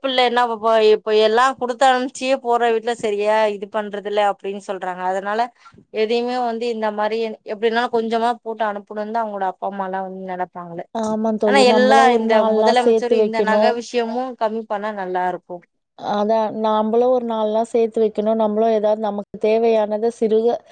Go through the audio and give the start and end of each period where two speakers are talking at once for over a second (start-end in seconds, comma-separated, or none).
11.5-13.6